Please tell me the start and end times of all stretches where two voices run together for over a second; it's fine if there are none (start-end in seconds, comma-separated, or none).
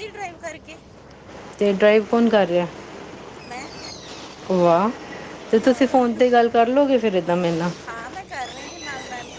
none